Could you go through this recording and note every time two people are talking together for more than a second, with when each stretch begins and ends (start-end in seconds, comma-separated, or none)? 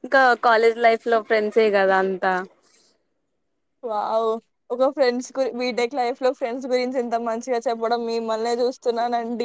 none